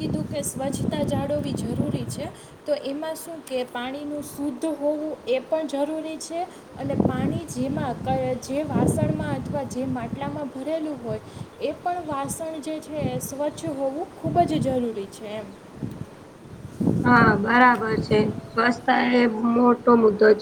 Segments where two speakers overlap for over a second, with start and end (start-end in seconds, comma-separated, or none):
17.1-18.8